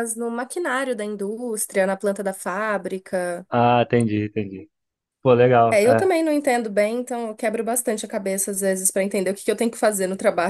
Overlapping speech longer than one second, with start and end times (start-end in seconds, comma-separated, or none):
none